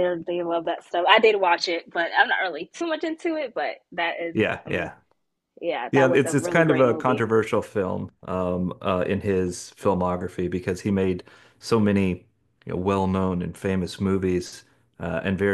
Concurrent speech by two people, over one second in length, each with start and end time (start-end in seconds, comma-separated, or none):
5.9-7.2